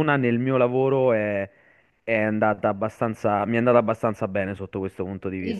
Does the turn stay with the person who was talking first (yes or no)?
no